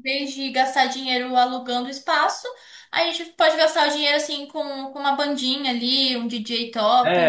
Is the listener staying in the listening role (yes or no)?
no